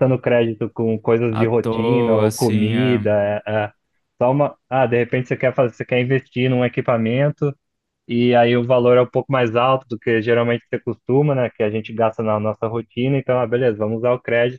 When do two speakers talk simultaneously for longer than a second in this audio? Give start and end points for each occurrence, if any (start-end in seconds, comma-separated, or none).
1.3-3.1